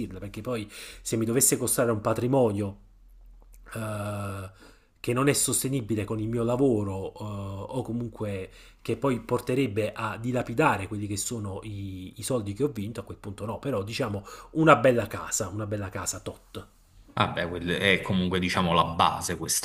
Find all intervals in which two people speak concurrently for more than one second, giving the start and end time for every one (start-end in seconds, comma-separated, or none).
none